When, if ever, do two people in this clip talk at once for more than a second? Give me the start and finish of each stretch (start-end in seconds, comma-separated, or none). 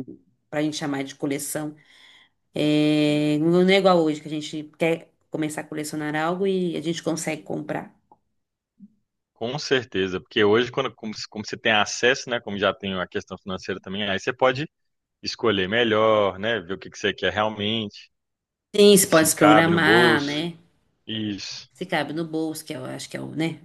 19.1-20.5